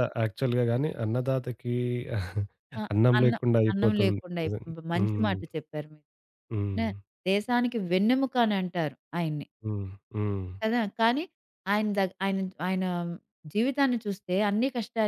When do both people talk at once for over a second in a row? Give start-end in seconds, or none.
3.2-5.3